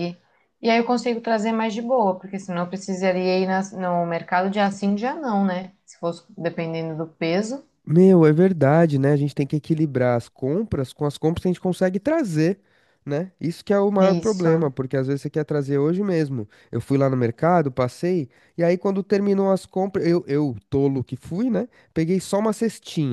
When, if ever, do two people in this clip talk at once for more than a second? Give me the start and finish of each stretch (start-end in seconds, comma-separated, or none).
none